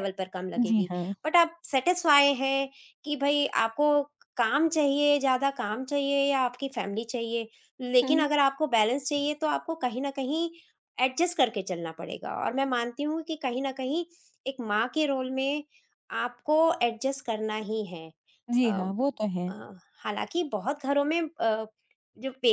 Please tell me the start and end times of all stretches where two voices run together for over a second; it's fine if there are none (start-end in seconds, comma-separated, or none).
none